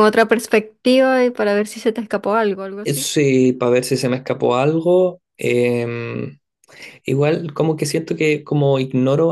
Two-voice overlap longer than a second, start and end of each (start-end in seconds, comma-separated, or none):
none